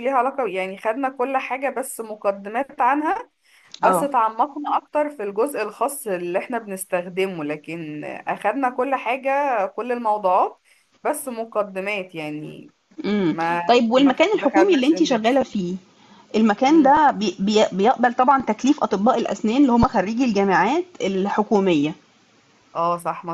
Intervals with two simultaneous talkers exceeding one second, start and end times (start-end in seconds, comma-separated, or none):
13.3-15.4